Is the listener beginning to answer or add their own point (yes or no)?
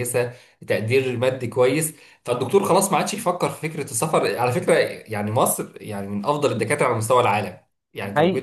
no